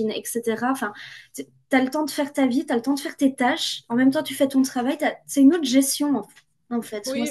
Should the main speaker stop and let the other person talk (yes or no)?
yes